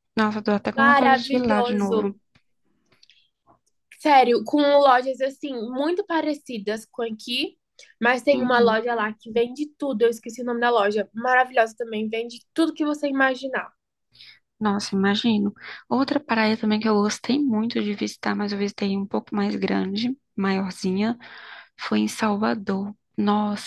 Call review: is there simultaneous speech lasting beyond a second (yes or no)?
yes